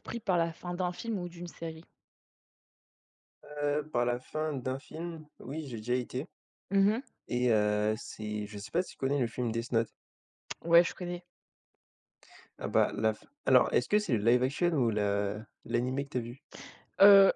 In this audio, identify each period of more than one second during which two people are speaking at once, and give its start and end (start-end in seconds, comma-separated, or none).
none